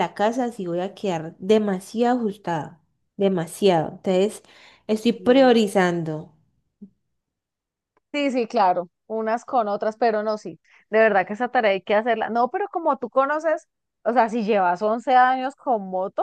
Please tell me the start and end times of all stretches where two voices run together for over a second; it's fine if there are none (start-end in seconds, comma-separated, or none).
none